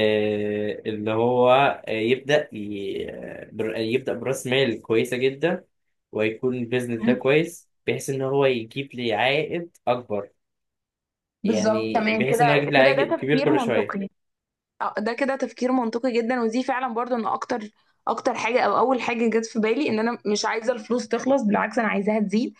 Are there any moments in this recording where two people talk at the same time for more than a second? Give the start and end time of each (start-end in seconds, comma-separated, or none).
11.4-14.0